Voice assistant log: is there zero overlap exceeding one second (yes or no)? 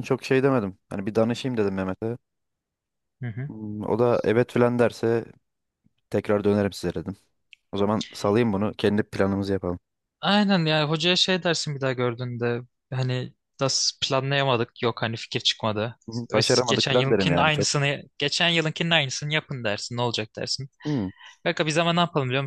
no